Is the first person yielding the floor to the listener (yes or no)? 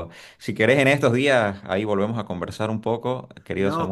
no